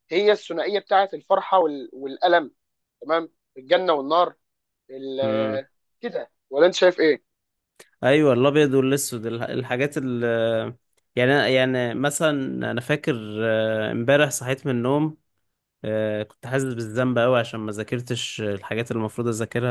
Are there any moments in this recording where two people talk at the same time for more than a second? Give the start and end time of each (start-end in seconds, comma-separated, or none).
none